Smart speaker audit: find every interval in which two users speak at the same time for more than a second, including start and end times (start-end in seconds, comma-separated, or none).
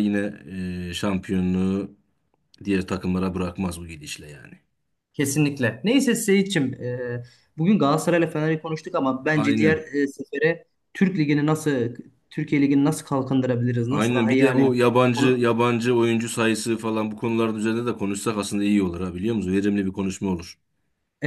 13.9-15.4